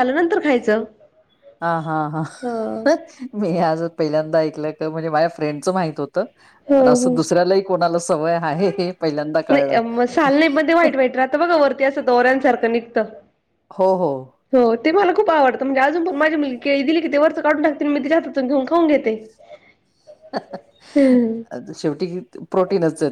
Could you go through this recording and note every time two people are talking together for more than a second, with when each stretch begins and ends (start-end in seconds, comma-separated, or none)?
none